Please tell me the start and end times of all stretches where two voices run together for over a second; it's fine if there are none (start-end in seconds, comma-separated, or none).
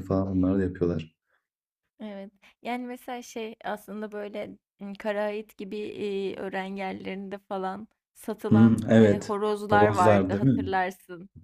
8.5-10.7